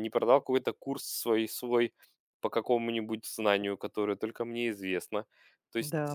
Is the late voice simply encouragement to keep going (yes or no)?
yes